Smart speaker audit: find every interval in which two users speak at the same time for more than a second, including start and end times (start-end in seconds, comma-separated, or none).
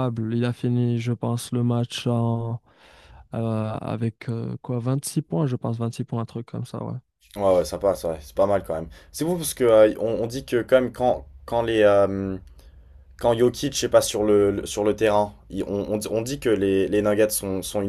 none